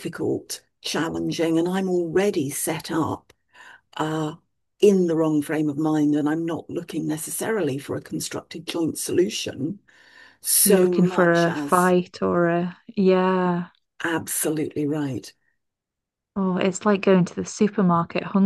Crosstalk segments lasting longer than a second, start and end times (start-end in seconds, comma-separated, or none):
10.6-11.9